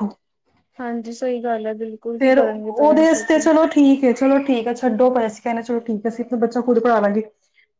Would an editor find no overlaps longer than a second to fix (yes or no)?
no